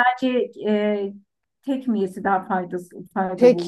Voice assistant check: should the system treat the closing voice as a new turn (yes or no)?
yes